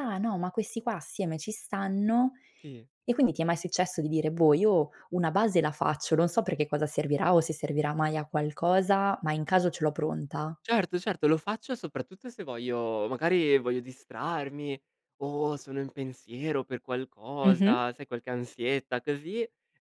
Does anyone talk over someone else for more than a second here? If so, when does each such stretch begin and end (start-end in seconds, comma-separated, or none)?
none